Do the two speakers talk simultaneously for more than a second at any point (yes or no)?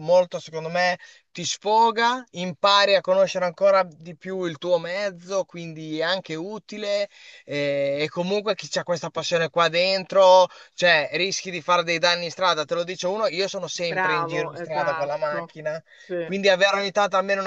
yes